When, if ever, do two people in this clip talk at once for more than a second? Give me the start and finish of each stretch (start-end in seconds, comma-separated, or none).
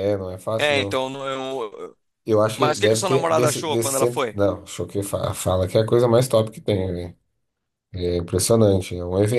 2.6-4.4